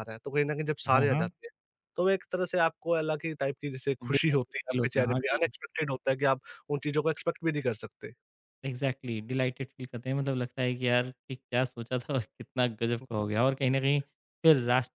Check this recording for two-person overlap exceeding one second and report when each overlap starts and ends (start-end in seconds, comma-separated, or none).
4.0-5.4